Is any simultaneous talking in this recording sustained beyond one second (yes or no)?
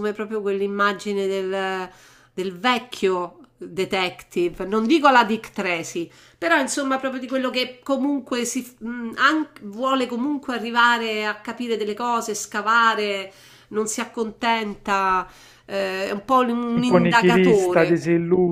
yes